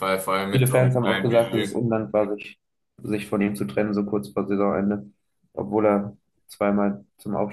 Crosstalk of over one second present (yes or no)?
yes